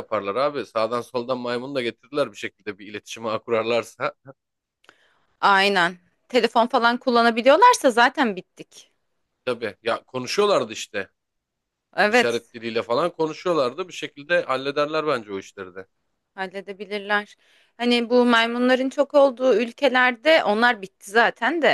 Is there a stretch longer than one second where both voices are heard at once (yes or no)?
no